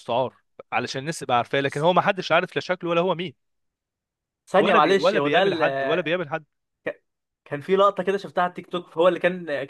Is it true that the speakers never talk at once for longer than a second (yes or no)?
no